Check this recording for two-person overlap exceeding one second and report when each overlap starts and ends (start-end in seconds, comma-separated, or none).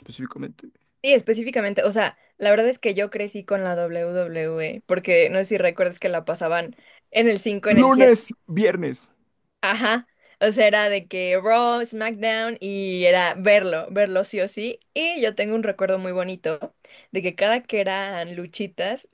none